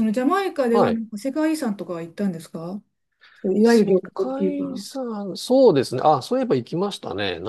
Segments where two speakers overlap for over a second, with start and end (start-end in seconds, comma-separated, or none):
3.6-4.9